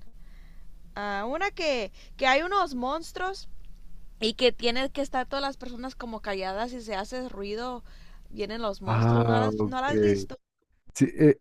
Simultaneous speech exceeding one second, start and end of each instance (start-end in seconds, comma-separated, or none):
8.8-10.3